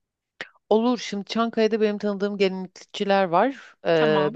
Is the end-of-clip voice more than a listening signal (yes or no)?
no